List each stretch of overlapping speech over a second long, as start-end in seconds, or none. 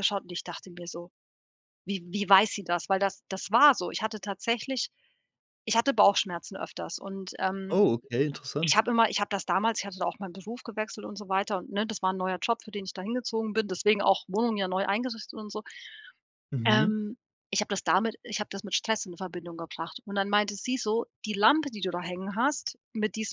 none